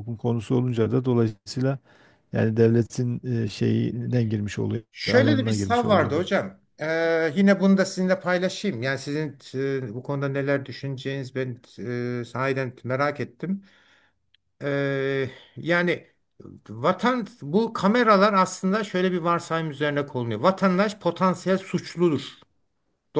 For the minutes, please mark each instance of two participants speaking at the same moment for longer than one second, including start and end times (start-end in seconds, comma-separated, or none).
4.9-6.2